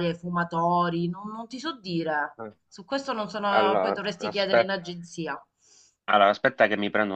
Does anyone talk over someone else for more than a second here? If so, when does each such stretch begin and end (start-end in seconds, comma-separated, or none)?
3.5-4.8